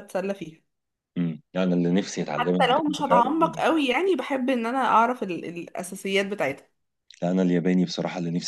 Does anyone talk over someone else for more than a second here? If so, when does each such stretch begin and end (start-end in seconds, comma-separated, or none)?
2.4-3.7